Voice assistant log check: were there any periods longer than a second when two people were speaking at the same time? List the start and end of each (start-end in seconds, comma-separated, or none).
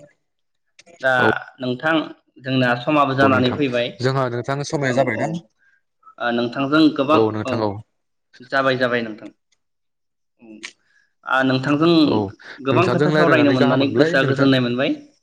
12.7-14.5